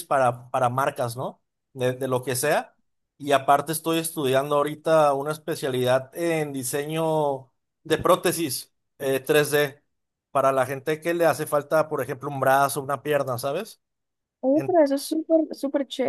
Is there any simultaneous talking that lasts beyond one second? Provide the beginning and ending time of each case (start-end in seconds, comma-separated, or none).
none